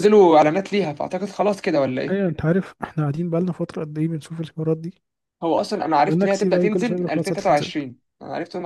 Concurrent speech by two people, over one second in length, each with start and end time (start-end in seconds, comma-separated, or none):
6.0-7.7